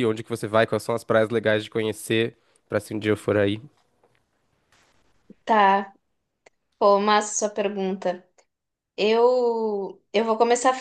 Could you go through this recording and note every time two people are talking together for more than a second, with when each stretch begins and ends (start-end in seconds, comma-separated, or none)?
none